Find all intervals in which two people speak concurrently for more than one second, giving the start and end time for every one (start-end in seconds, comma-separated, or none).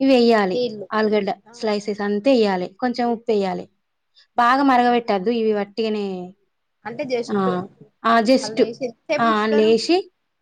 none